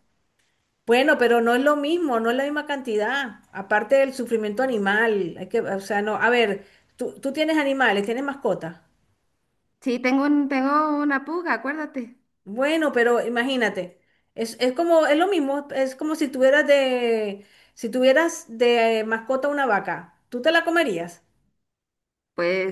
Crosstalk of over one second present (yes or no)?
no